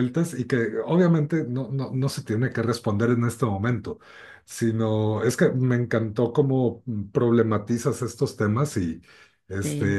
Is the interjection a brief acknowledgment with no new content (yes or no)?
yes